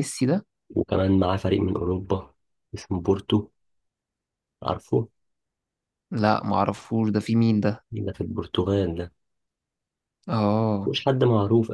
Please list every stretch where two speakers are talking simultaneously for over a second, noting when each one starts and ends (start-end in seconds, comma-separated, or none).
none